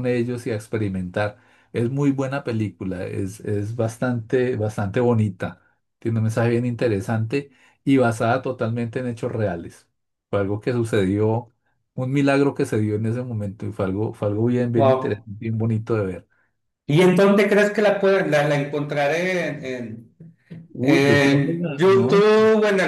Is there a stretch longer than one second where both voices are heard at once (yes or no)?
yes